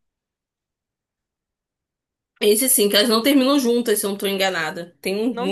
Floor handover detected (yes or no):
yes